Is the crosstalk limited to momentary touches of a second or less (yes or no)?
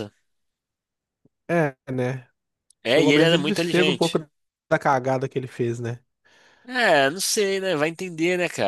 no